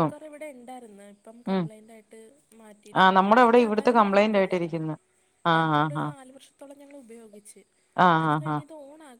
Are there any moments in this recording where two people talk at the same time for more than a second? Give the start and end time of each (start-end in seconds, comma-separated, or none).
3.0-4.8